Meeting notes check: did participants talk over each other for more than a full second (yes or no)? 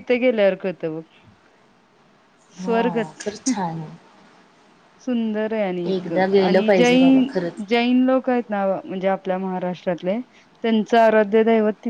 yes